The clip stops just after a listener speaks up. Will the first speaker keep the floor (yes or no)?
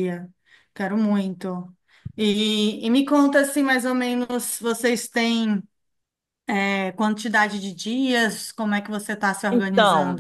no